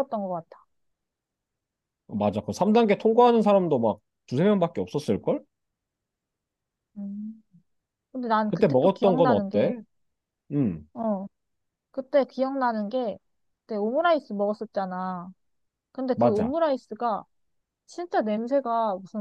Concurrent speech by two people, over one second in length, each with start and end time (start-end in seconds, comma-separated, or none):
8.5-9.7